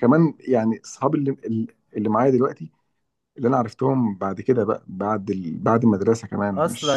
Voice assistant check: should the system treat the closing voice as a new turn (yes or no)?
yes